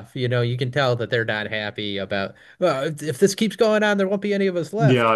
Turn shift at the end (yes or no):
yes